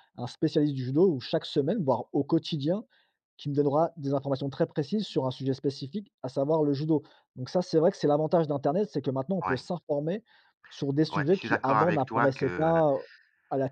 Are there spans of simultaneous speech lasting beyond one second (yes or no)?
yes